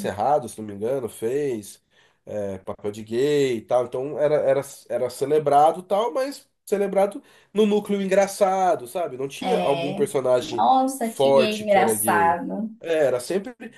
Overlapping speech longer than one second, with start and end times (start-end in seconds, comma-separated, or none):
9.4-12.4